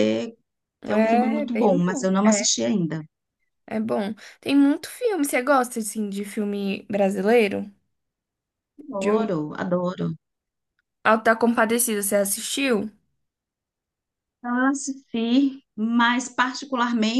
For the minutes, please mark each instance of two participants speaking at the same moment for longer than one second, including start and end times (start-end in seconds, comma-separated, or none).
0.8-2.4